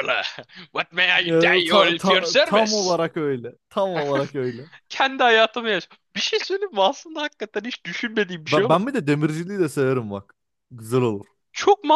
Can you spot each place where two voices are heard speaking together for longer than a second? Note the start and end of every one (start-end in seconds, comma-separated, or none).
1.3-3.0